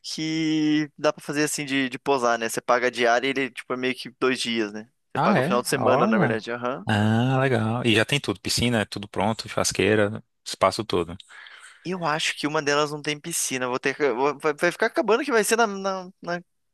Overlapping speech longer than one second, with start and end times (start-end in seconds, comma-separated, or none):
5.2-6.4